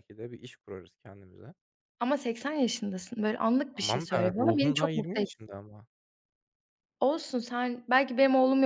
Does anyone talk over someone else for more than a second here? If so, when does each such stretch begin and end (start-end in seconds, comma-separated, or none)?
3.8-5.4